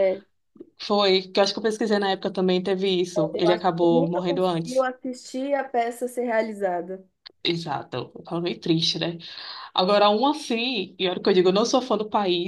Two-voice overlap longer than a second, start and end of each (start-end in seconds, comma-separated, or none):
3.3-4.9